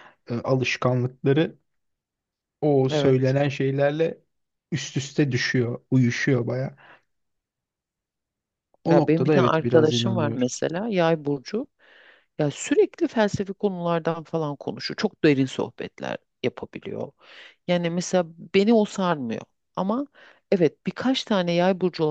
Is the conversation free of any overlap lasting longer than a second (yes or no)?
no